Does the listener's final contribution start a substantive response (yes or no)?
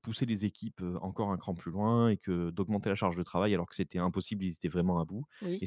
no